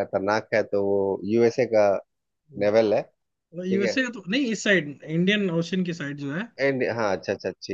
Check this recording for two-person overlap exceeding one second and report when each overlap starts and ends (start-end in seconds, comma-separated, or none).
none